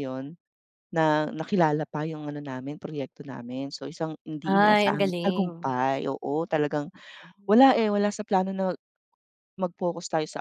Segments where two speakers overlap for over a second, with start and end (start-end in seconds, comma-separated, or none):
4.4-5.7